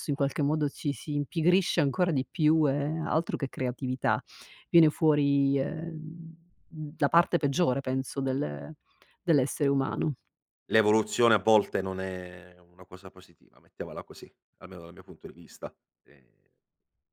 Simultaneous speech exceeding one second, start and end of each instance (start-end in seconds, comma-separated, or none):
none